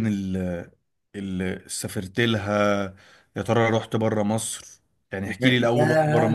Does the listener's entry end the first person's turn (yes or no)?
yes